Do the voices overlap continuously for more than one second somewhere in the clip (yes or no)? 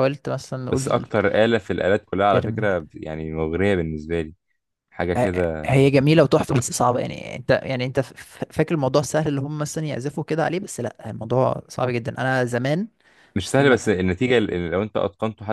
no